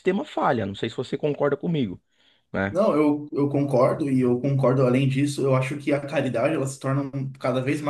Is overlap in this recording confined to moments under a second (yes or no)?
yes